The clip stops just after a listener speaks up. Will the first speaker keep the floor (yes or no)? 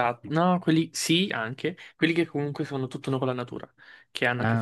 yes